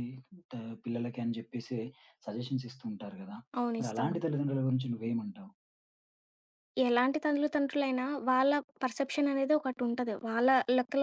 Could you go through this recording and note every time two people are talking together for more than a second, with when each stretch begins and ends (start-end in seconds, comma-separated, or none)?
none